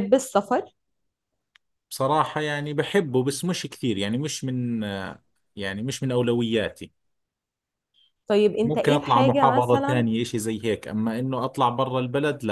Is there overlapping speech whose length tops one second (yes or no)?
yes